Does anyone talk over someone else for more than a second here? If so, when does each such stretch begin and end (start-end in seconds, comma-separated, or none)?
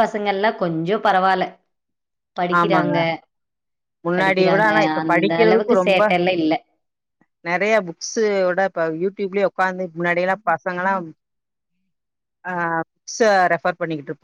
4.2-6.0